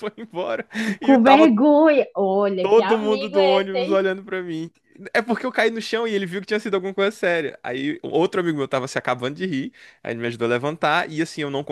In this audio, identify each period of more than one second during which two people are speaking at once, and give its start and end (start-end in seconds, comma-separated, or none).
2.6-4.0